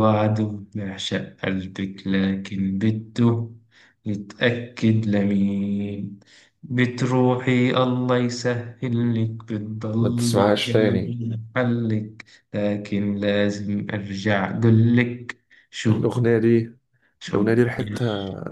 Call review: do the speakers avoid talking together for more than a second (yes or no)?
no